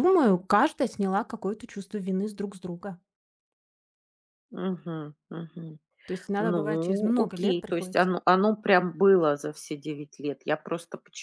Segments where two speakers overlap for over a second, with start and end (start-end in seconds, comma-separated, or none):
6.4-8.2